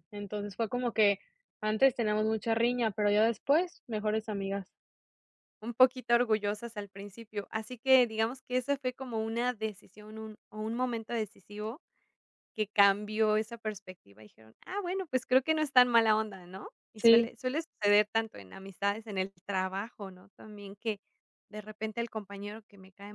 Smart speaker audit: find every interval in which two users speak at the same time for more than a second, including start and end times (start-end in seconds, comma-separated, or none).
none